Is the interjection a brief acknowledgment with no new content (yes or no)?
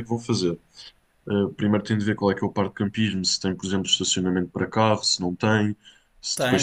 no